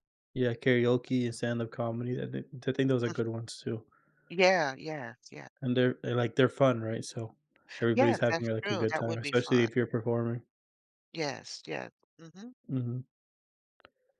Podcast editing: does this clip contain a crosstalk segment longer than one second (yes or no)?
yes